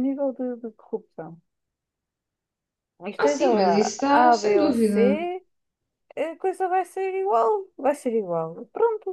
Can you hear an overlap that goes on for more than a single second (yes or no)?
yes